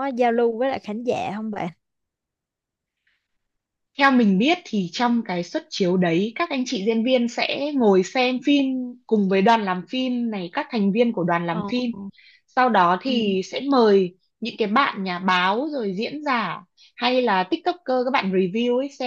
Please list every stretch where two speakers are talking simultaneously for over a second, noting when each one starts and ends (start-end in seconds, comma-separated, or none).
none